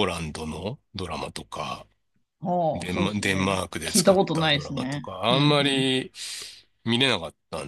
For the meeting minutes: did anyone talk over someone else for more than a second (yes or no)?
yes